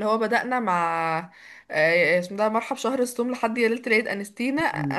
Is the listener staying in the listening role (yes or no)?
yes